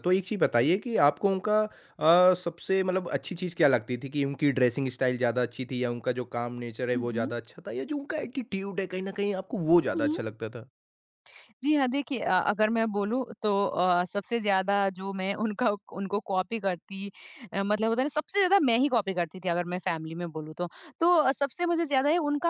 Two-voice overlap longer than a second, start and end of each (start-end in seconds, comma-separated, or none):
none